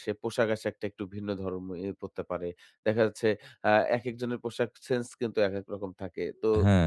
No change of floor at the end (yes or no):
yes